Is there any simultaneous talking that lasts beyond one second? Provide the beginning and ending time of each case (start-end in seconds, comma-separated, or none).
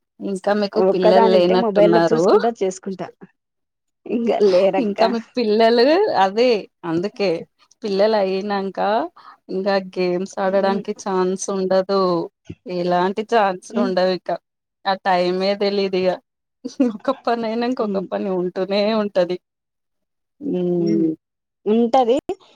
0.9-2.2